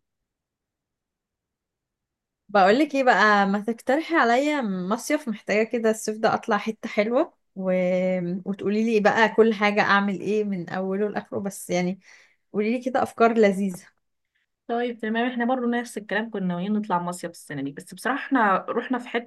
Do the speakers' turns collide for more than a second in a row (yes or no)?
no